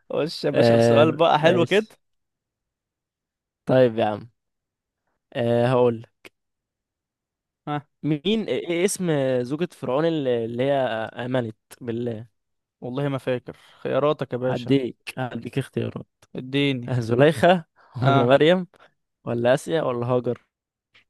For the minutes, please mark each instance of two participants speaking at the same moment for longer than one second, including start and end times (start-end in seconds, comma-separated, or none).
0.5-1.9